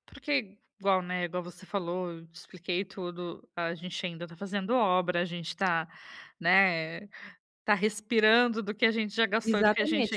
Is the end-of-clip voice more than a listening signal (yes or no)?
yes